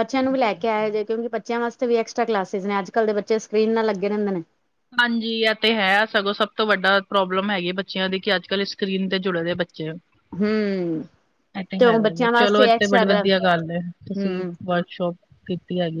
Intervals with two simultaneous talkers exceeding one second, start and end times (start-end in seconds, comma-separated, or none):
11.8-13.2